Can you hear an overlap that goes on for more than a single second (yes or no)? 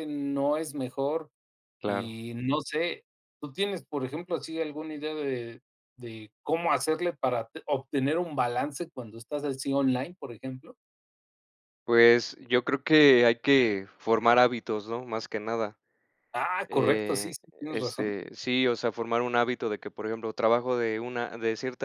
yes